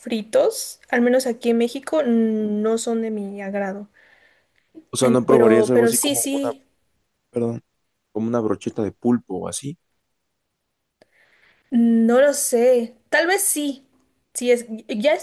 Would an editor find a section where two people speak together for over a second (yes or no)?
yes